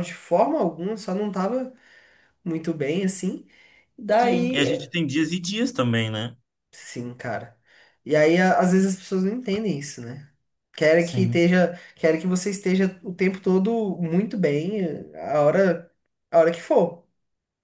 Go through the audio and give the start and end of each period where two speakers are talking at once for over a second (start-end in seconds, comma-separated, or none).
none